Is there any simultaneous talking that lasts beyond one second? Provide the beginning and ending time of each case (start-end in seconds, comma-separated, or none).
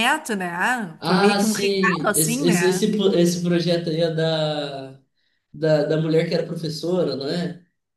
1.0-2.9